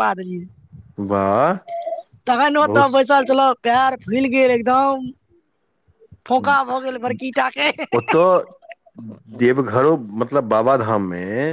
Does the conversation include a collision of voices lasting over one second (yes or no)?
no